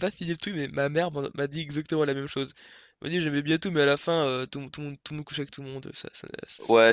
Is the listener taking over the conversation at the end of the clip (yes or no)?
yes